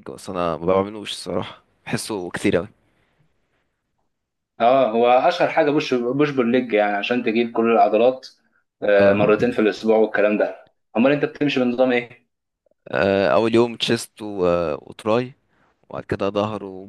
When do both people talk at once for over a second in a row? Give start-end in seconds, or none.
none